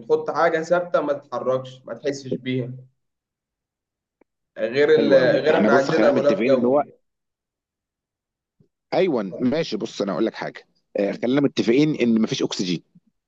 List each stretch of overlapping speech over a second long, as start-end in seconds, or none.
5.0-6.8